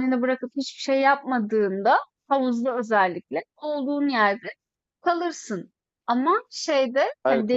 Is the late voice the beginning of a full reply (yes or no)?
no